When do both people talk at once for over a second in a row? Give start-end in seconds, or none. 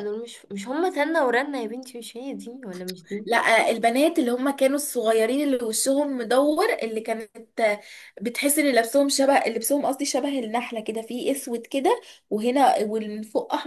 none